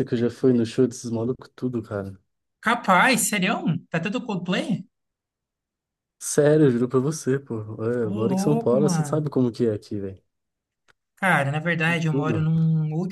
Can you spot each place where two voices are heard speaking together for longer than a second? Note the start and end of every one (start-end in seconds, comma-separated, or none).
8.0-9.3